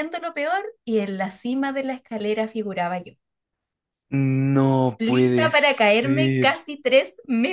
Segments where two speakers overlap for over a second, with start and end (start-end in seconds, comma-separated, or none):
5.0-6.5